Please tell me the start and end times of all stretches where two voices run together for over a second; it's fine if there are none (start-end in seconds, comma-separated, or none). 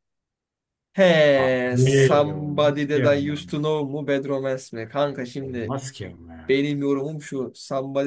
1.4-3.4